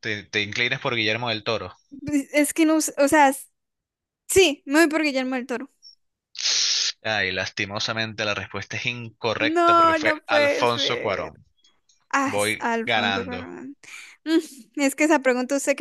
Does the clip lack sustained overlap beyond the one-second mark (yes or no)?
no